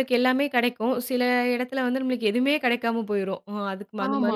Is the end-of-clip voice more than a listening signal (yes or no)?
yes